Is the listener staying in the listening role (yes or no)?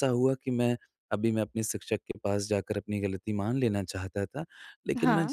yes